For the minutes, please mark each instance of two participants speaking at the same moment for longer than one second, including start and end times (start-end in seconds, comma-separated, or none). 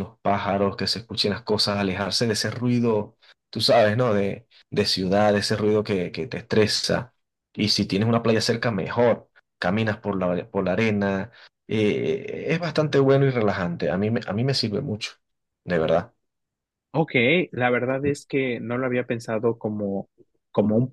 none